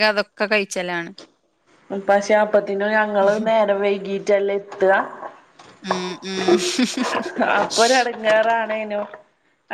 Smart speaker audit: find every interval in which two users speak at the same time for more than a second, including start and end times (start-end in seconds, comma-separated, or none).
none